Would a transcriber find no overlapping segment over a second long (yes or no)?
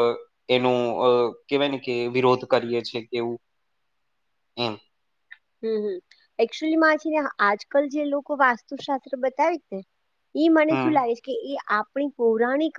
yes